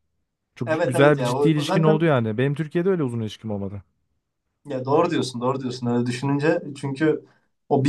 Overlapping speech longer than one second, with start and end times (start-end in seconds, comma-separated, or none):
0.7-2.1